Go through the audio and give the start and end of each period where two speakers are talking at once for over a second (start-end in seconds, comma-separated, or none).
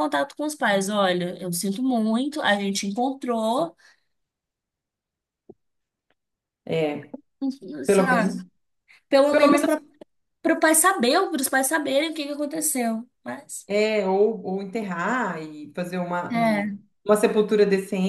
none